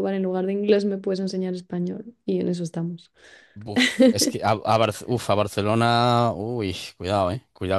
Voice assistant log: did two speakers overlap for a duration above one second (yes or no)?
no